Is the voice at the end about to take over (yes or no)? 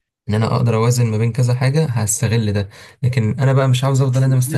yes